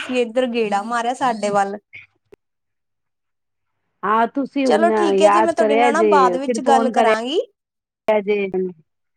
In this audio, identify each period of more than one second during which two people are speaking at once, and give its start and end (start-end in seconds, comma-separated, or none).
4.6-7.4